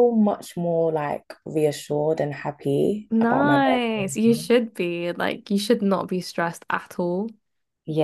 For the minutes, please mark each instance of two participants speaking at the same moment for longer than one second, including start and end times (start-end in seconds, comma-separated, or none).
3.1-4.5